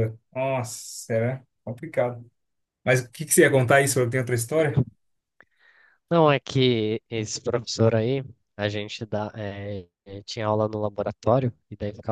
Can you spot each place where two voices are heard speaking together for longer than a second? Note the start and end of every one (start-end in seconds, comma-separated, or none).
none